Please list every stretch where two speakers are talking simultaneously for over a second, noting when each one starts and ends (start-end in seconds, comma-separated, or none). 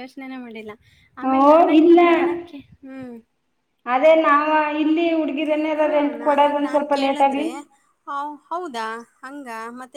5.8-7.5